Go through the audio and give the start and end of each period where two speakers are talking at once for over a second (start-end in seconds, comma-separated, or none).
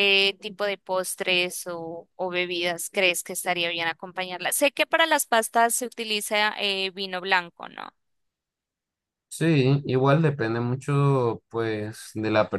none